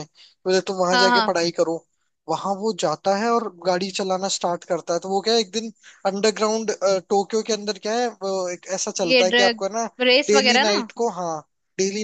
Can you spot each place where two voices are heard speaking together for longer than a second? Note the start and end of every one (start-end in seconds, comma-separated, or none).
none